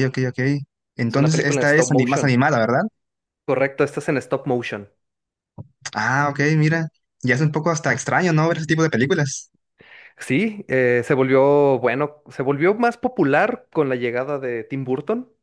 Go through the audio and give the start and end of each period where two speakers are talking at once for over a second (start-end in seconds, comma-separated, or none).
1.1-2.4